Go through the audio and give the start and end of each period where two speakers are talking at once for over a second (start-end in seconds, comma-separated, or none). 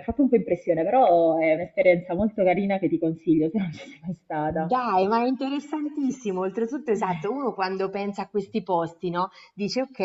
none